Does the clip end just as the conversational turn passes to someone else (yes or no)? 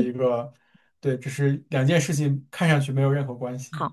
yes